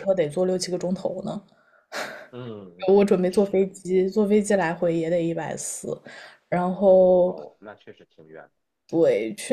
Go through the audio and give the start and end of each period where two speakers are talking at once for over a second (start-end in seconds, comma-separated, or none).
none